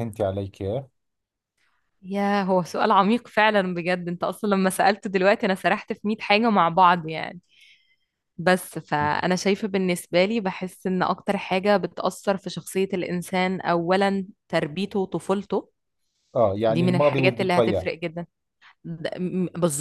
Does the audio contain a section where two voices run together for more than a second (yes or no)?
yes